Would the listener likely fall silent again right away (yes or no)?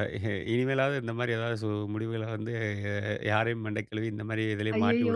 no